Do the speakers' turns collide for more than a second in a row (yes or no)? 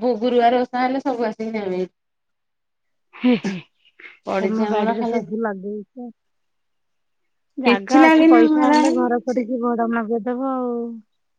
yes